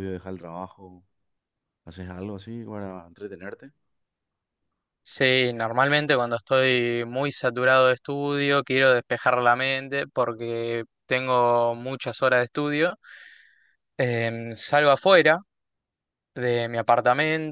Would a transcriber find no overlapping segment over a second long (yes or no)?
yes